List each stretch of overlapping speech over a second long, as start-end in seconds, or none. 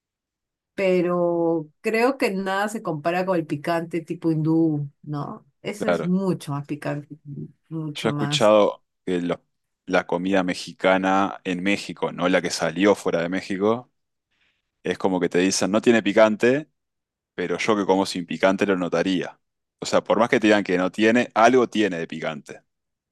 none